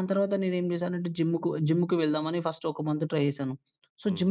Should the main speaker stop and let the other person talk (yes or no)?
no